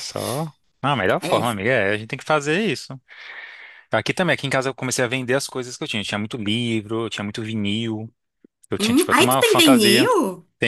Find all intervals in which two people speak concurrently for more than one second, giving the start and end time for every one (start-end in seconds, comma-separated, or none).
8.8-10.1